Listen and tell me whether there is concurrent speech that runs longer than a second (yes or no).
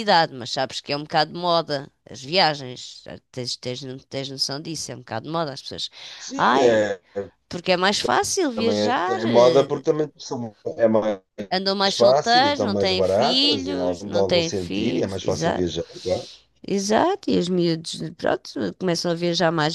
yes